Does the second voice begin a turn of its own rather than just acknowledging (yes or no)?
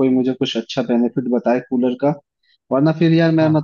no